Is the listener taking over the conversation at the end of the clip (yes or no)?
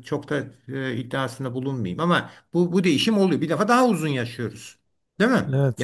yes